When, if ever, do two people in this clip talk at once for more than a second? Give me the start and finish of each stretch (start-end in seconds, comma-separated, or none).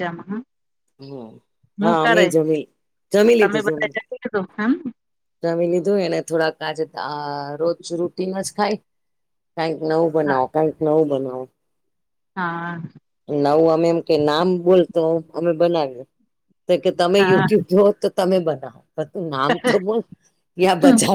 none